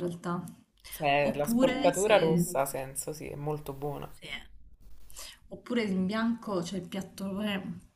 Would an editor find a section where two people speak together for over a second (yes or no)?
yes